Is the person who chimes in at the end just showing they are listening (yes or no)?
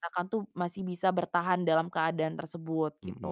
no